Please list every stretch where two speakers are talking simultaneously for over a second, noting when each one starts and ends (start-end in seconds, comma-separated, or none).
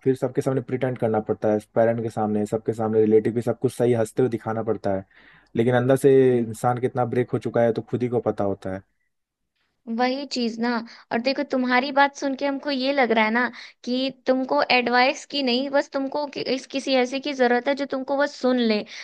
none